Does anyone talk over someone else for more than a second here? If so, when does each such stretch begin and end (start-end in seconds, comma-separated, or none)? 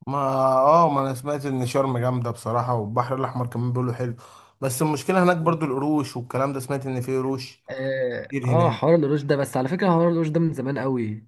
none